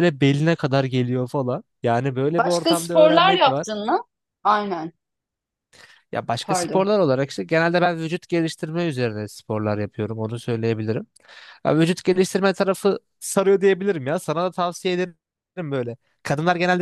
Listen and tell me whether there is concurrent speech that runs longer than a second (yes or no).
yes